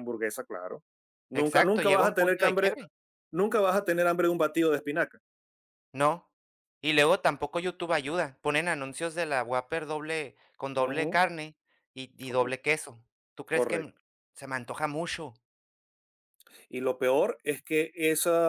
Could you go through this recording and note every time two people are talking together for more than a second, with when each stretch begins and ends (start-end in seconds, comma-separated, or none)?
1.3-2.7